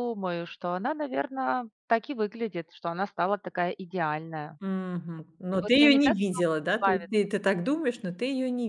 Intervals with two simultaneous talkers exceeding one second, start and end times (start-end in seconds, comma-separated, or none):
5.5-7.1